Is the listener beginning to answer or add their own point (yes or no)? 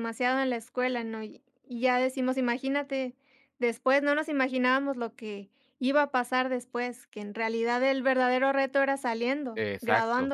yes